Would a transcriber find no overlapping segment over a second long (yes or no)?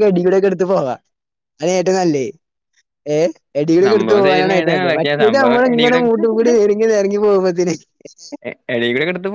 no